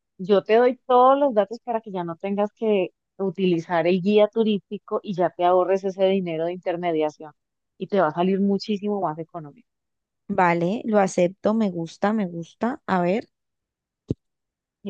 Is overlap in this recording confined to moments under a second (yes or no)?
yes